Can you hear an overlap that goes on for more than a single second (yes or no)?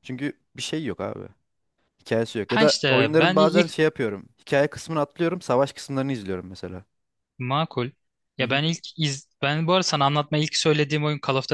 yes